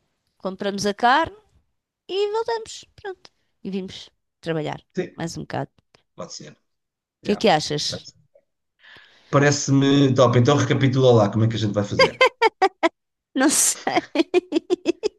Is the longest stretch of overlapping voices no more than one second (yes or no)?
yes